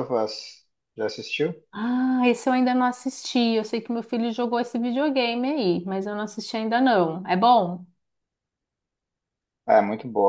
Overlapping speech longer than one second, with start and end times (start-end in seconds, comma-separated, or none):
none